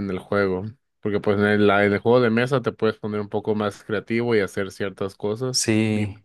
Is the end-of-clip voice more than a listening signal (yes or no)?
no